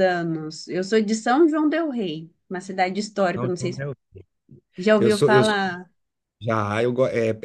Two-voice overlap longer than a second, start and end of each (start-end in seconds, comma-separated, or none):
none